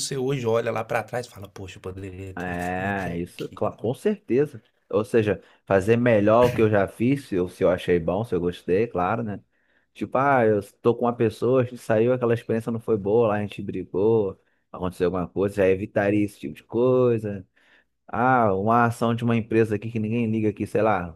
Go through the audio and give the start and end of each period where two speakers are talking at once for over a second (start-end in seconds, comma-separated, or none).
2.4-3.8